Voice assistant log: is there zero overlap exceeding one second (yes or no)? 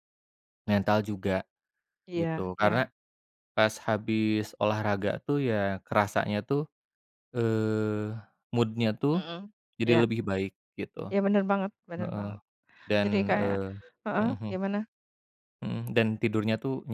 yes